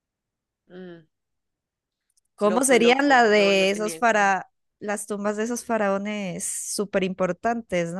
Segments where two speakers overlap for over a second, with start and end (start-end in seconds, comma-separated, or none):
2.4-4.3